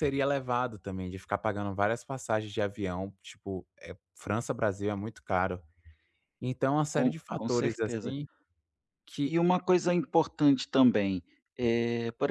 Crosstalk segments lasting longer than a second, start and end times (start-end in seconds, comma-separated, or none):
6.9-8.2